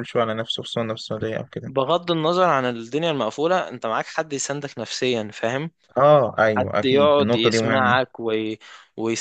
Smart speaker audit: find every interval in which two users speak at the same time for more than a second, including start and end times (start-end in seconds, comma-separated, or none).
6.6-8.0